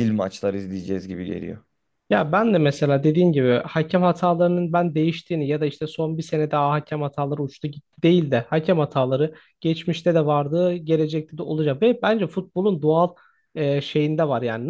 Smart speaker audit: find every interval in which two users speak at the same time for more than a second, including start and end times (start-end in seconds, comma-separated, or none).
none